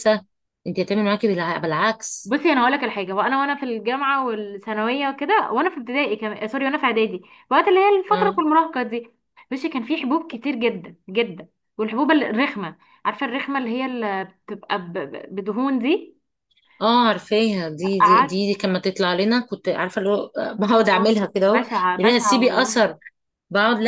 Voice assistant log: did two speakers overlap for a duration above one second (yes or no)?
yes